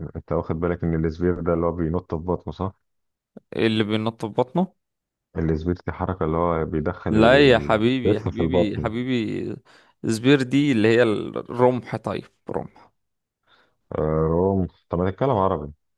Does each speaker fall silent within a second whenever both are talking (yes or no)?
no